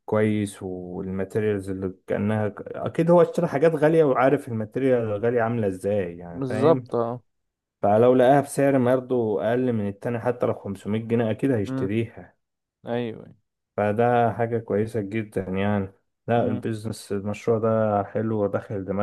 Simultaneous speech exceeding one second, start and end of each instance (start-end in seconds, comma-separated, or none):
none